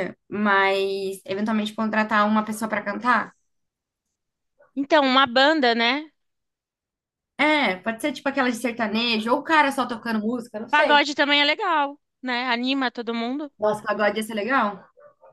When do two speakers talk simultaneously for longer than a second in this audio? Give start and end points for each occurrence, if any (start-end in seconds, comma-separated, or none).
none